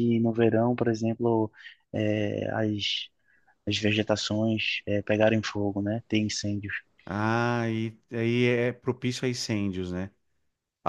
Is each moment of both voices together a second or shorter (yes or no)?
yes